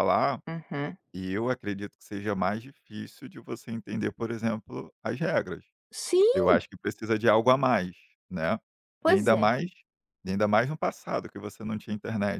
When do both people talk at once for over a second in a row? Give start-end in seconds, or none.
none